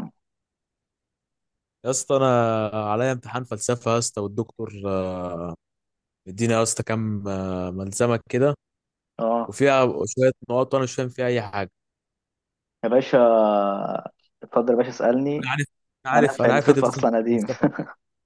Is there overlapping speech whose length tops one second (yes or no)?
yes